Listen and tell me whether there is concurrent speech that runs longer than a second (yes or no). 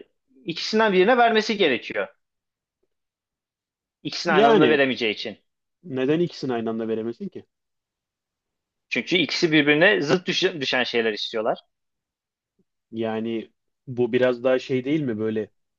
no